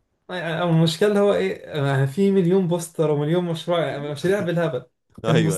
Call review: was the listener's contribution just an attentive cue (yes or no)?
yes